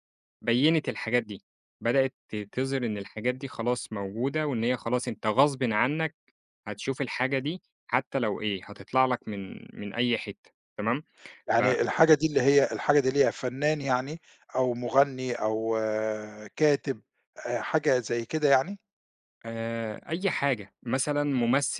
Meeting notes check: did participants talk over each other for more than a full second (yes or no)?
no